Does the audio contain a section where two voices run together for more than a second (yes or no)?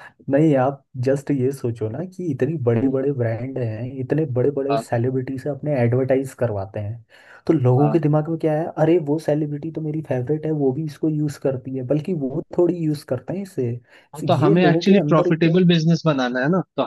yes